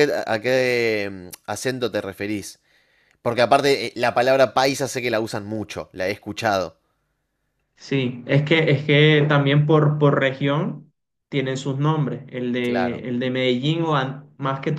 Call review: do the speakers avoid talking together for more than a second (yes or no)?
yes